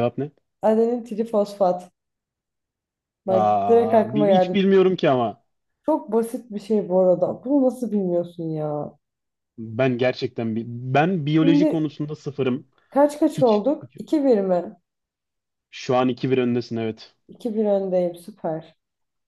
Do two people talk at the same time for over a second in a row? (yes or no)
yes